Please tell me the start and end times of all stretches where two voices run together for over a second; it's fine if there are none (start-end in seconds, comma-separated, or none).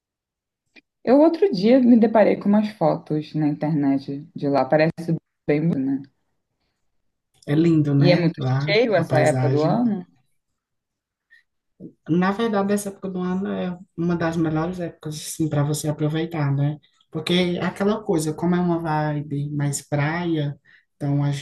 8.0-9.8